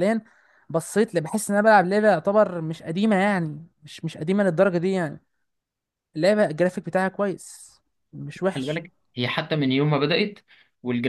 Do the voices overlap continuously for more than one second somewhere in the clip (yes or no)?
no